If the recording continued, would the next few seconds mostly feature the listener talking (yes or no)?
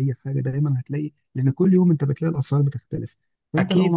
no